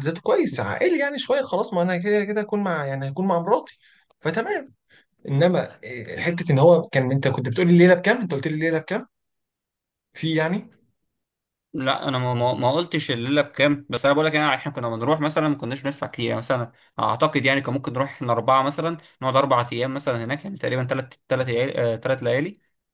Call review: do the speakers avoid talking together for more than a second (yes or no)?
yes